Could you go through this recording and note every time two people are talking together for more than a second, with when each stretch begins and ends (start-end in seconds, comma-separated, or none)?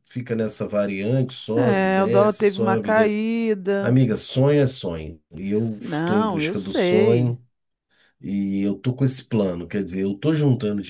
1.5-3.2, 5.8-7.4